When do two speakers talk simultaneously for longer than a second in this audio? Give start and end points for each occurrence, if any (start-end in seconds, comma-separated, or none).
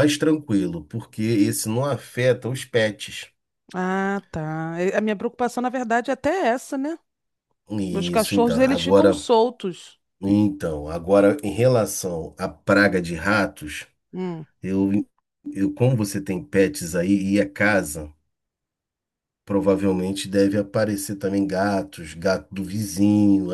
7.9-9.2